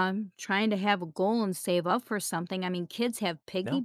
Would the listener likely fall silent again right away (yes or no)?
yes